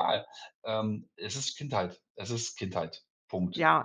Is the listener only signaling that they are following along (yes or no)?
no